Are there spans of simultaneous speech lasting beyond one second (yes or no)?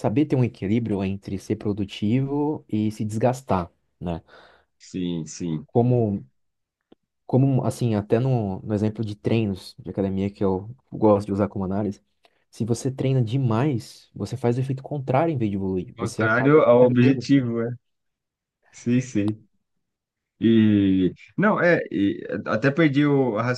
yes